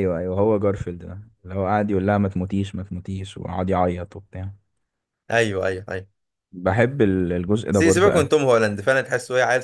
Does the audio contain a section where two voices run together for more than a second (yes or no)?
no